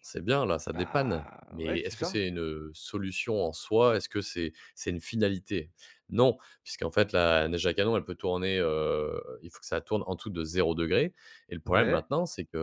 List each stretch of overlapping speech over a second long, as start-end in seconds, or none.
0.7-2.2